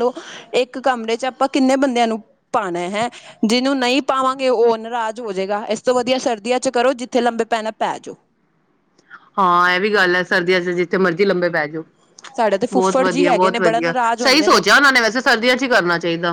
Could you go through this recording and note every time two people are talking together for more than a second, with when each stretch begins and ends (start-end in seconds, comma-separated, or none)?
12.7-14.5